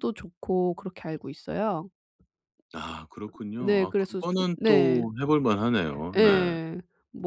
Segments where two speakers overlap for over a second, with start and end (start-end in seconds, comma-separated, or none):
3.6-5.0